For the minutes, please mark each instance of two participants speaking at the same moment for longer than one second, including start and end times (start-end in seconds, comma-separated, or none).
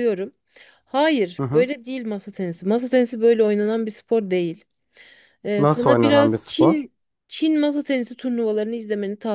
5.6-6.9